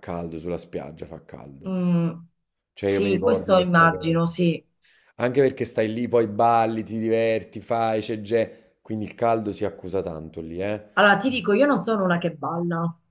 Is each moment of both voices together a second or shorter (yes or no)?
no